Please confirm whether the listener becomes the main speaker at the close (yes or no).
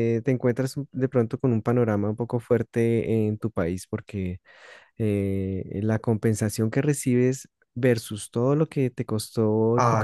no